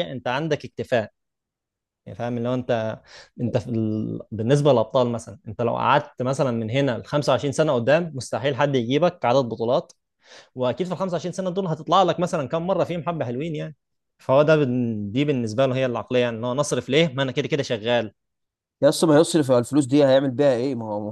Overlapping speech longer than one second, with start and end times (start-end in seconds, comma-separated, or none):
none